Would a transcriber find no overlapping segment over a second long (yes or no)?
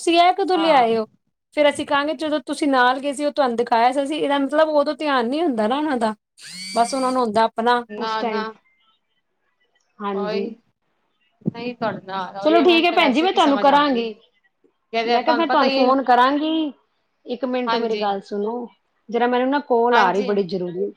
no